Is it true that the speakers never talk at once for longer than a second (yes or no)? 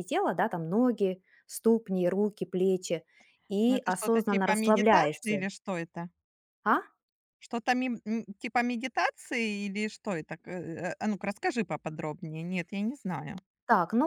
no